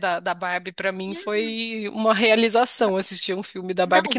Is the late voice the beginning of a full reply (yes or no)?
no